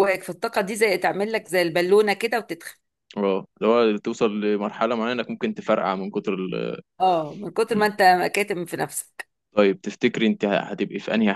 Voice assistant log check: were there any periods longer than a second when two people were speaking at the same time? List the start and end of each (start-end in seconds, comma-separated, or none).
none